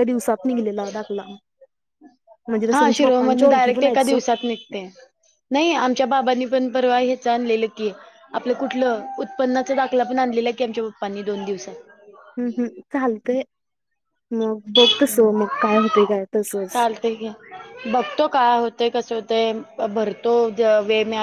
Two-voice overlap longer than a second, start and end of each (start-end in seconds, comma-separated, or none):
2.7-4.2